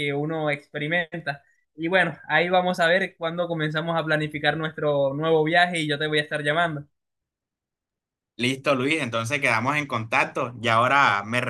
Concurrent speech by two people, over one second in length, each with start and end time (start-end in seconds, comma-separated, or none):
none